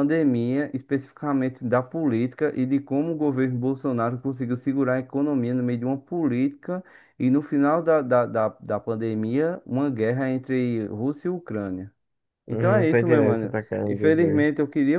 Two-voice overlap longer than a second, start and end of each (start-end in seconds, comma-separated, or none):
12.5-14.5